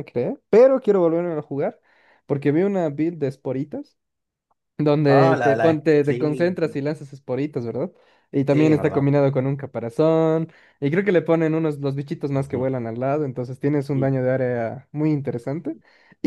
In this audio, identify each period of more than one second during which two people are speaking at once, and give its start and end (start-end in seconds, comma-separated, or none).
5.1-6.6